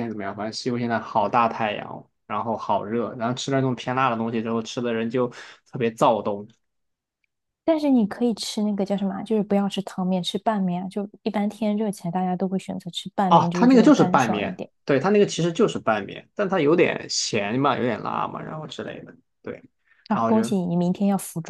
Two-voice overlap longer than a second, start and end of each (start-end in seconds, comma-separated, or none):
13.3-14.7